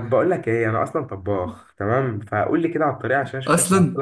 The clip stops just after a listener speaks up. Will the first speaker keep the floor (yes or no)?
yes